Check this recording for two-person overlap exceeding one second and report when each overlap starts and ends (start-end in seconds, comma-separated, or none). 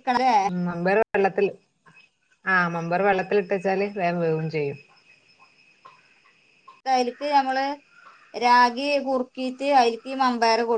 none